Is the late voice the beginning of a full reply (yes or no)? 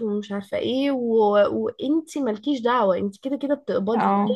no